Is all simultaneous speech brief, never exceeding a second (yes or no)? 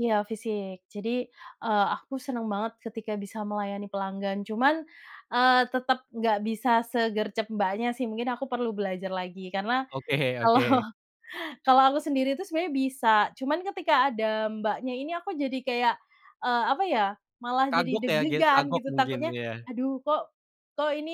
no